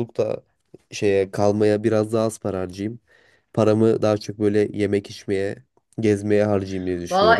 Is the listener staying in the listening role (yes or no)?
no